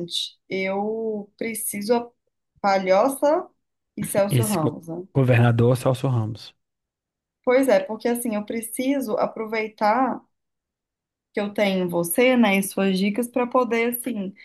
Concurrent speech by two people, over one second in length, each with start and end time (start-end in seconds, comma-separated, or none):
none